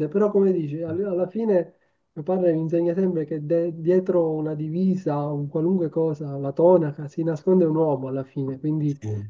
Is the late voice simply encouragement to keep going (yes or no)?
yes